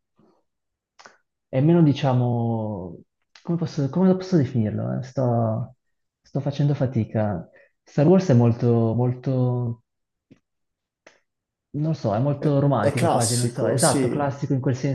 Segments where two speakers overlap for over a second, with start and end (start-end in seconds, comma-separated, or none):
12.4-14.4